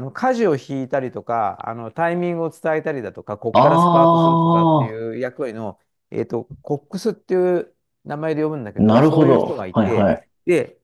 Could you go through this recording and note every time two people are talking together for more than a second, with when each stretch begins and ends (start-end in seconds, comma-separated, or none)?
3.5-5.0, 8.8-10.3